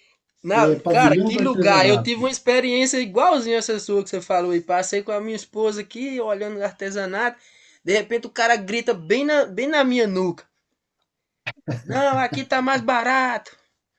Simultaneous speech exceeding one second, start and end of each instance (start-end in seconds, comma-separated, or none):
0.6-2.3